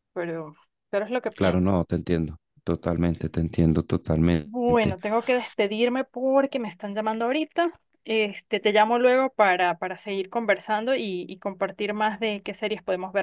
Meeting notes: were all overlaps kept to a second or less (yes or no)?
yes